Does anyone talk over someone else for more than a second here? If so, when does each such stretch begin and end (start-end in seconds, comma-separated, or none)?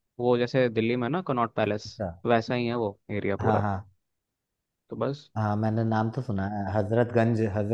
none